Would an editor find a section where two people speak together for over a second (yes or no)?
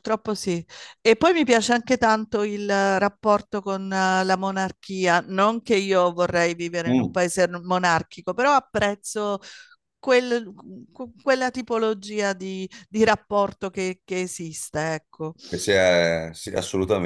no